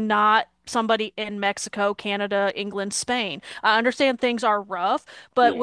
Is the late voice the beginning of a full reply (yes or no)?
no